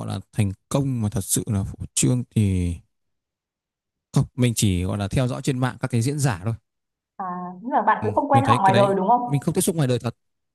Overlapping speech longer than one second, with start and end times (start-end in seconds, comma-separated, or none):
8.0-9.5